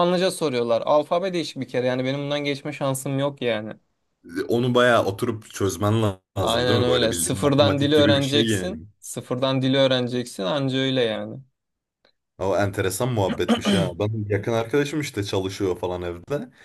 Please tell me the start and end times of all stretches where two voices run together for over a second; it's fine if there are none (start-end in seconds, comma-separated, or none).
6.4-8.8